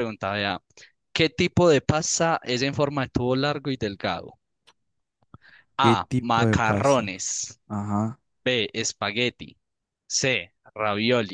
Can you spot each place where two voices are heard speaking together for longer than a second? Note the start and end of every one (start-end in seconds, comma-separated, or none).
5.8-7.1